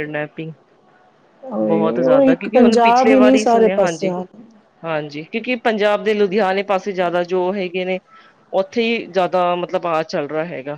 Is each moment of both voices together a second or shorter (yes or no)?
no